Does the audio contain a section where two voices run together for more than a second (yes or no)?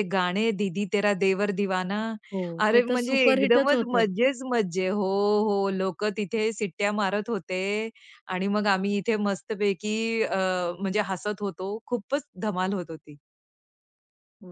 yes